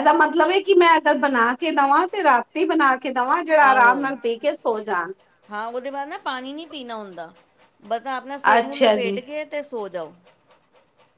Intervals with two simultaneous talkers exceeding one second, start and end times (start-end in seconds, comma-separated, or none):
none